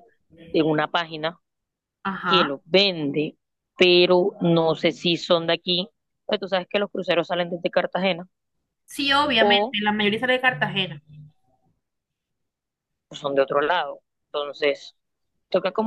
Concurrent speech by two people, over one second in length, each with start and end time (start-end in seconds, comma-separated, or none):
none